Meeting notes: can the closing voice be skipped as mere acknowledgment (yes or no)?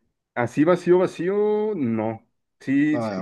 yes